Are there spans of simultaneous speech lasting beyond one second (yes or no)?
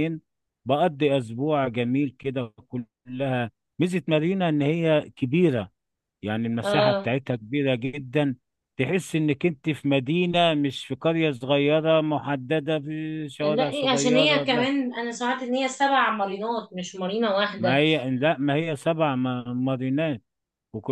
yes